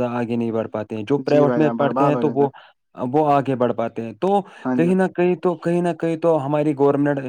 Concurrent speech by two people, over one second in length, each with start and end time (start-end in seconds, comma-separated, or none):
1.3-2.5